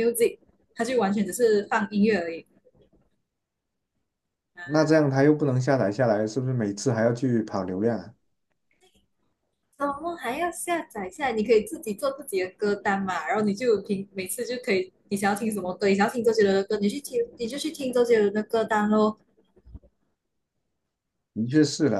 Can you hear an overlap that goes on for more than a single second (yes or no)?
no